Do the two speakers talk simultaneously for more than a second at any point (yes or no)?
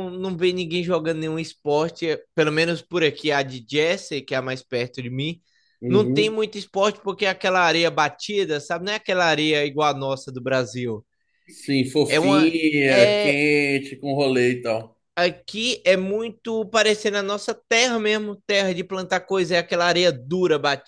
yes